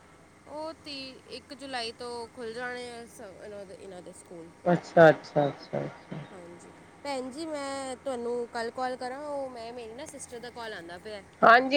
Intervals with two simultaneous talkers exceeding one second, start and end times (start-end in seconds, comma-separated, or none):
none